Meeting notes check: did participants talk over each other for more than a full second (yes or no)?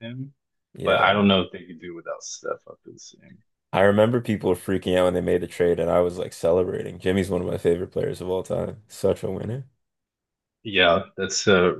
no